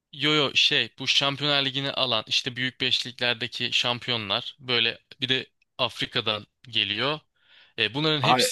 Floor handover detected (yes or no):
no